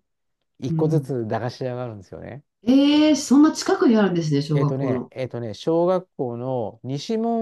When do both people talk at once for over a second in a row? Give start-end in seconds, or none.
none